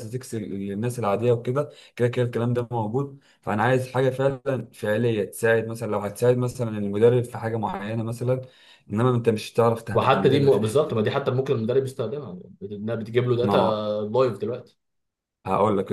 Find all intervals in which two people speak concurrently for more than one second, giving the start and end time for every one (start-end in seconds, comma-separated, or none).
9.9-11.2